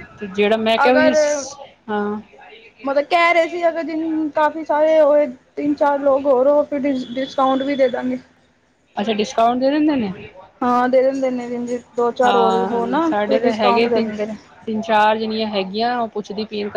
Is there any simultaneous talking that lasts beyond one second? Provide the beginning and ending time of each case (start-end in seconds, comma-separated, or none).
12.2-14.1